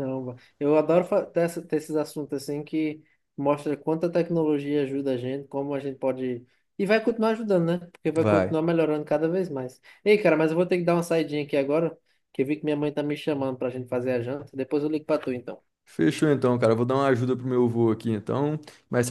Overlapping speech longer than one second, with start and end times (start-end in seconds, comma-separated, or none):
none